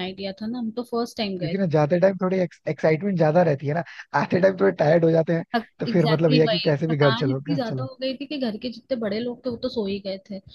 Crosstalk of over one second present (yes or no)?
yes